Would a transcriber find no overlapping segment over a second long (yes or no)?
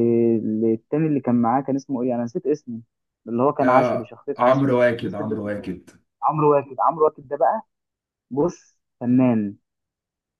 no